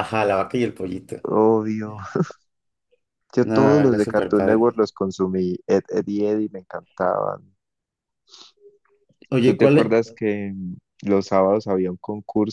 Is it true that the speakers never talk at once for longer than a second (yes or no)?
no